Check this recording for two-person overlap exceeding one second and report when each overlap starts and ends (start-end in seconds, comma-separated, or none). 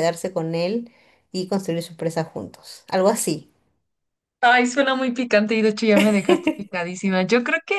none